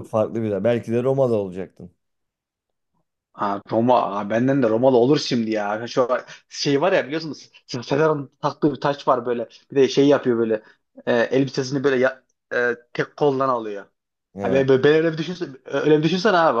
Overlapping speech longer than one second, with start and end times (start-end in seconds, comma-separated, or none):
none